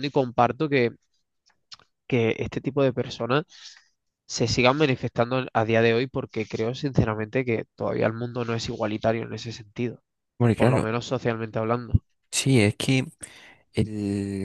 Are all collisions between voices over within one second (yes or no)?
yes